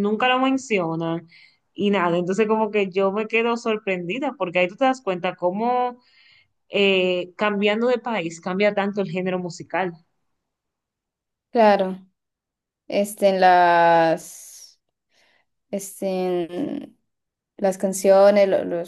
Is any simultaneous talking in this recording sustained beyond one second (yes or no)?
no